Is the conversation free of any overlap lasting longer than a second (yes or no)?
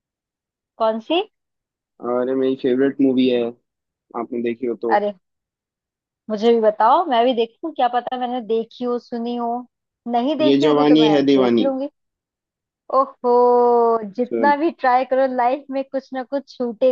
no